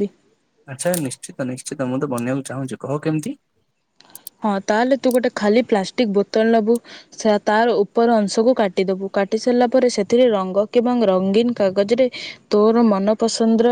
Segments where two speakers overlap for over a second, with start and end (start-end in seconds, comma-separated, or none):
none